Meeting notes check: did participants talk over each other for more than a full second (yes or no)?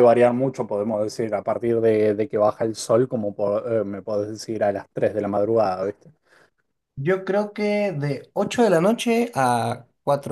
no